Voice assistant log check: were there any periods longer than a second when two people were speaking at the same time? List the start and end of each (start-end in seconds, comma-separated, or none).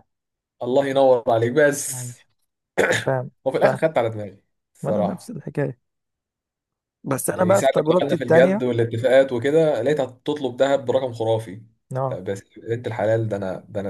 7.2-8.7